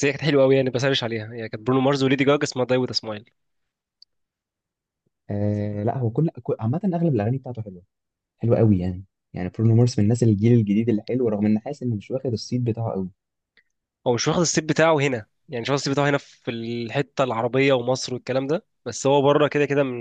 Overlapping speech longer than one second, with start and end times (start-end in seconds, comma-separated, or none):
none